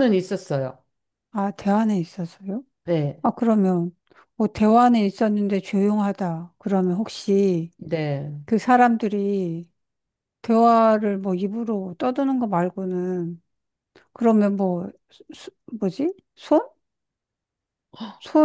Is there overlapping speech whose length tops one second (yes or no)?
no